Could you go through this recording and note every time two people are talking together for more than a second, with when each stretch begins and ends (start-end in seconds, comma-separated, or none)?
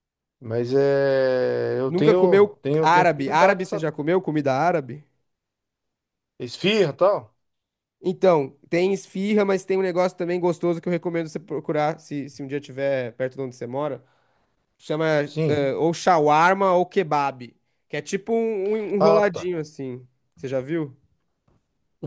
1.9-3.9